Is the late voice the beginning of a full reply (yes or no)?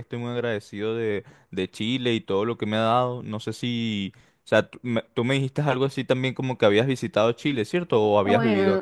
yes